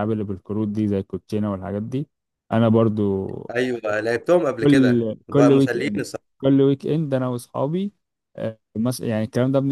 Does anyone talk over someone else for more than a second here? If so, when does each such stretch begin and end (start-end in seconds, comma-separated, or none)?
4.6-6.0